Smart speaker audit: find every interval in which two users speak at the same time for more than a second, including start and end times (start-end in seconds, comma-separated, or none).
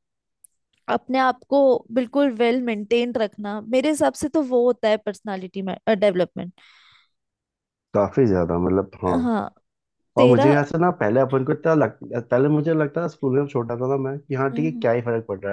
none